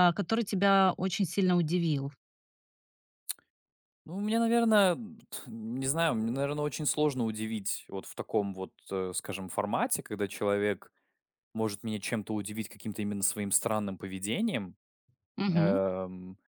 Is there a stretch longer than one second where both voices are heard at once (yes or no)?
no